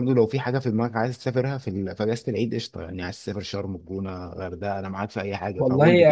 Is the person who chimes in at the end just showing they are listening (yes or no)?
no